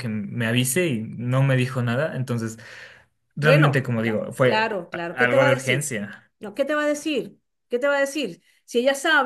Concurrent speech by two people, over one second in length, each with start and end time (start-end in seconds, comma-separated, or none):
3.4-5.9